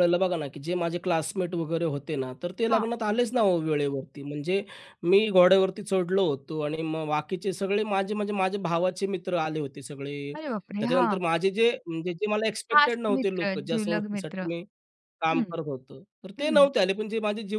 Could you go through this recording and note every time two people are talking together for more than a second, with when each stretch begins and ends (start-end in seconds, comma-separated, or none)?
12.7-14.5